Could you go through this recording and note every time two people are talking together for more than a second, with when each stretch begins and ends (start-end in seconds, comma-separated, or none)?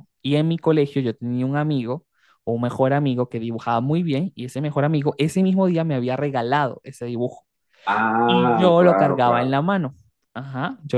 8.2-9.6